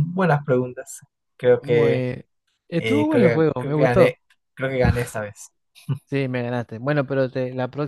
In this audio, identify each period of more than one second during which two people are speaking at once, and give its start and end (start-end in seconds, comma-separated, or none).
2.8-4.1